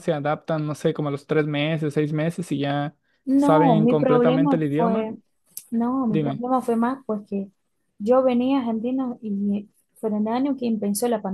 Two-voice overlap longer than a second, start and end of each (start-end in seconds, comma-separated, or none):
3.4-5.1